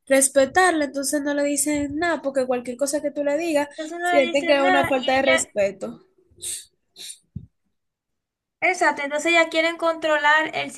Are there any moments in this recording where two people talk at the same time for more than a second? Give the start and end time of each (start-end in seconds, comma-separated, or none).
3.8-5.4